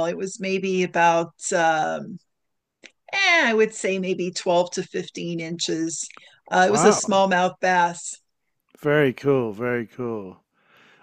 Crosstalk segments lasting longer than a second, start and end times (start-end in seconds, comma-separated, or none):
none